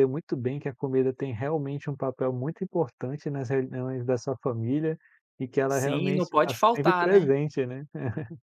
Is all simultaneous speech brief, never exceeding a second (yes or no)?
no